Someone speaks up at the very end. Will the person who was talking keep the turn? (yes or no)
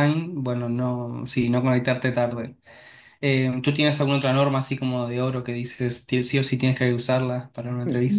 no